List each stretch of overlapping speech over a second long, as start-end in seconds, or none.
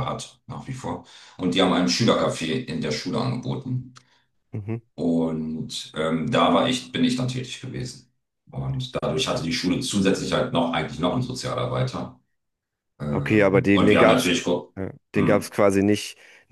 13.1-14.3